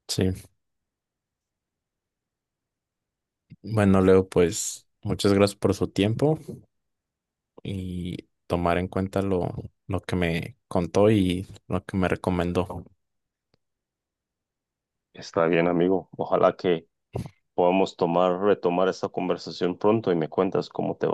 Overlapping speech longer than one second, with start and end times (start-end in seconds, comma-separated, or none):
none